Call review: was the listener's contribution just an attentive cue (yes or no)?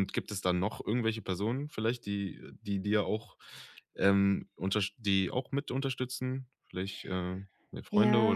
no